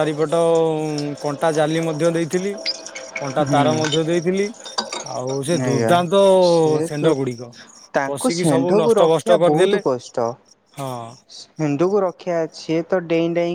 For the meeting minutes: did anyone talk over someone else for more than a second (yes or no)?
yes